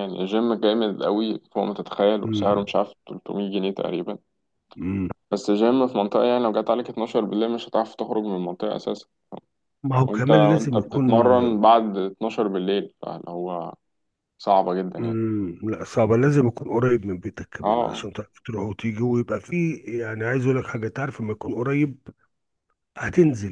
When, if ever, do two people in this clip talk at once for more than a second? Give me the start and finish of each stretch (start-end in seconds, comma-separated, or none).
10.1-11.3